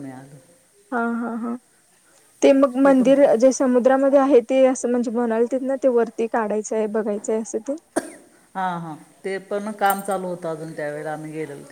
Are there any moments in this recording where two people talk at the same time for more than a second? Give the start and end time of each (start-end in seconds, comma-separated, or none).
none